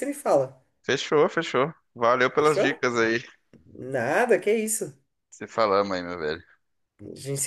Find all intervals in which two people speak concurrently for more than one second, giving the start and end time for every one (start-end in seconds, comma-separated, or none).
none